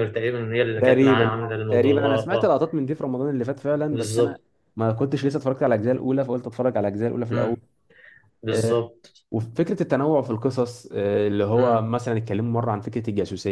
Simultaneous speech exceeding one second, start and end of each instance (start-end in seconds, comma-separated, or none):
0.8-2.5